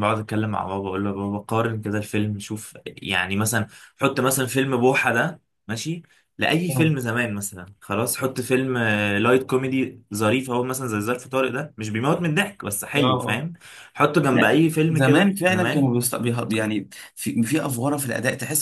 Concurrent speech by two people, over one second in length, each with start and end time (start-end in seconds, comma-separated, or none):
14.3-15.9